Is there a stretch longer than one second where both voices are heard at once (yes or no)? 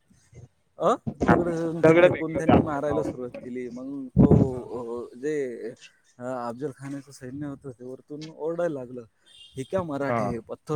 yes